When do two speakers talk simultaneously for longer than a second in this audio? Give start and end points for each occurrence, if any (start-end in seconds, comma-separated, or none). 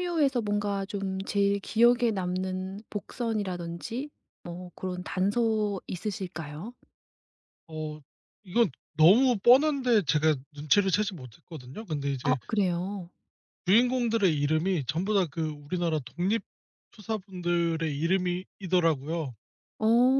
none